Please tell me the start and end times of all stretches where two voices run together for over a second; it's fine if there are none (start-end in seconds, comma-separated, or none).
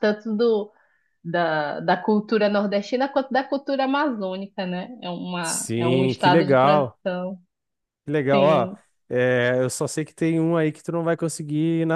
5.4-7.0